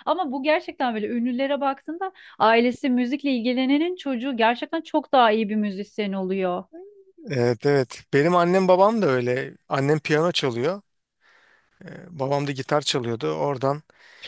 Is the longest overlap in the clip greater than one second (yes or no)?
no